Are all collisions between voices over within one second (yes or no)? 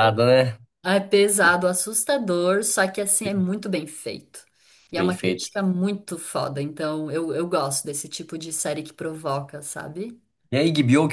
yes